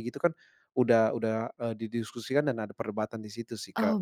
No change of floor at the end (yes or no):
no